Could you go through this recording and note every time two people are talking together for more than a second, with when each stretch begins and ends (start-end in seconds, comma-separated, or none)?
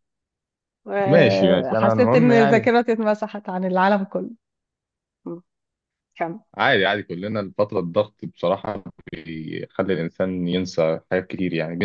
1.1-2.7